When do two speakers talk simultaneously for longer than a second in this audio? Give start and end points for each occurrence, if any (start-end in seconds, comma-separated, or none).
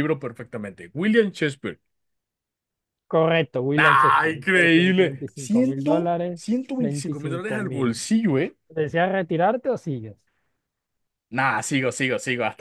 3.8-8.0